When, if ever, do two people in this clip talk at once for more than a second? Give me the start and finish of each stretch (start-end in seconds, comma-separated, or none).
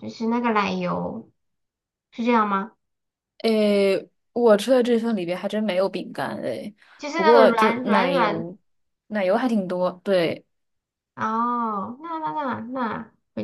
7.1-8.5